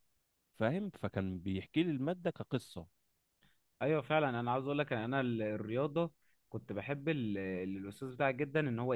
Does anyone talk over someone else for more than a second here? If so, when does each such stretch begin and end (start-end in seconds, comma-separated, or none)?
none